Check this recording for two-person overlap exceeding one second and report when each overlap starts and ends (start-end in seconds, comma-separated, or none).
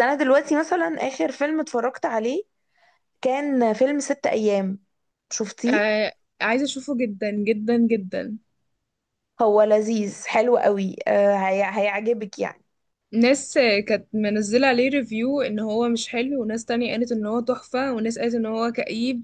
none